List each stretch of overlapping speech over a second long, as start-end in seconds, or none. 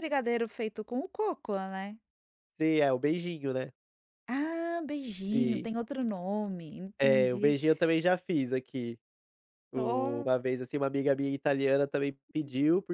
none